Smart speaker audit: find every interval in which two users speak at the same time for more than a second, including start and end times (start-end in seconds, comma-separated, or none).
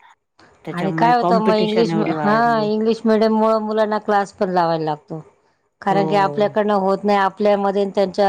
0.7-2.4